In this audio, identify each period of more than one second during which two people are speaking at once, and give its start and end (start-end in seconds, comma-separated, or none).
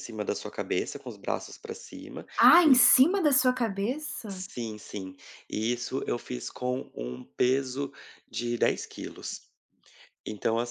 none